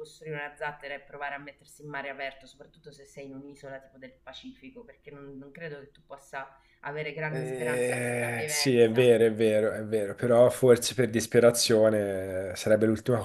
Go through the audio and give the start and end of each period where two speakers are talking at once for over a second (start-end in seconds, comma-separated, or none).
7.3-9.1